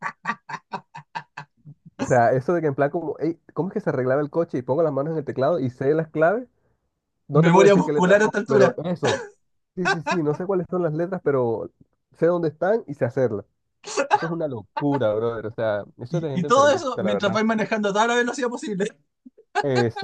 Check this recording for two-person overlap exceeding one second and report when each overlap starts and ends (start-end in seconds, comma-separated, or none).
7.5-8.8, 16.1-17.4